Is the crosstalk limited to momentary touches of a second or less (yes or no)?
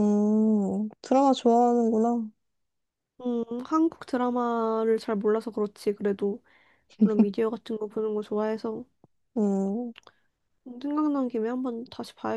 yes